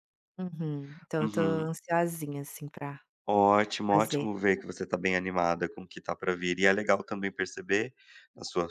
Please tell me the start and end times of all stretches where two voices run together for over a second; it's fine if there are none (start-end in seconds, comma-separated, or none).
none